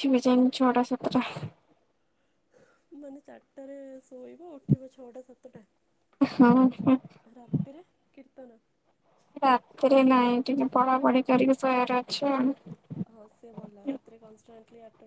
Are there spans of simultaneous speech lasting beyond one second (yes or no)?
no